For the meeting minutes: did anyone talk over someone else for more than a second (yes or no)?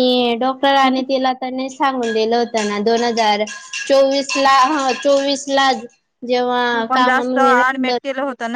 no